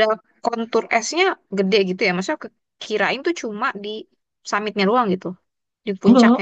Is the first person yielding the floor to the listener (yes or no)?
no